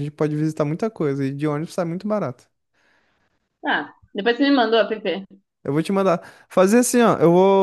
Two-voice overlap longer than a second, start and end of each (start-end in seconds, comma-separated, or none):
none